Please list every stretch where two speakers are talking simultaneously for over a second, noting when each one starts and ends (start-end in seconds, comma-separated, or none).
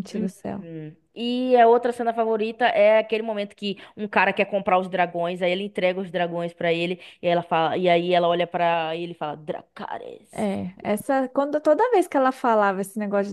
none